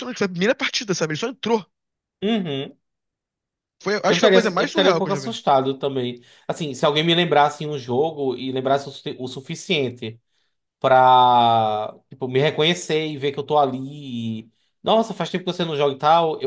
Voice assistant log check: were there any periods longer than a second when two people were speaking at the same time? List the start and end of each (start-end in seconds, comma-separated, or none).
4.1-5.4